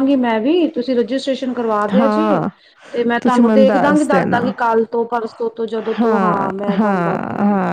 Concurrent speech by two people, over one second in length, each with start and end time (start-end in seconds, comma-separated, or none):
3.2-4.4